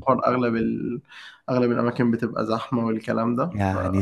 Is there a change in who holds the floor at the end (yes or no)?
yes